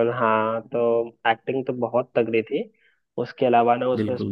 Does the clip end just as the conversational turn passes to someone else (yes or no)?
no